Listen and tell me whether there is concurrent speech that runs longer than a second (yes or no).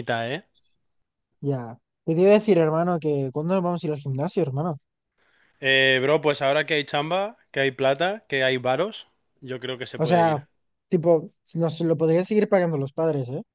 no